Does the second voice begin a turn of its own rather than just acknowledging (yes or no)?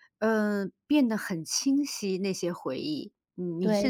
yes